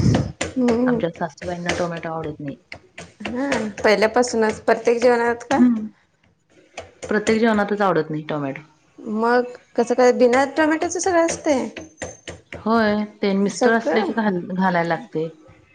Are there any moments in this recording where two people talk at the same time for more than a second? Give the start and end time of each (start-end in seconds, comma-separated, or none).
none